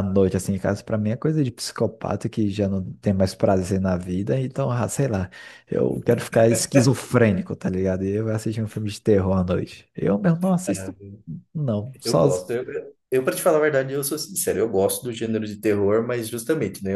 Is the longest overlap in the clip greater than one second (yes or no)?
no